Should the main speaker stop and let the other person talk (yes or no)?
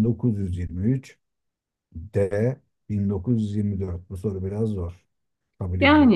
yes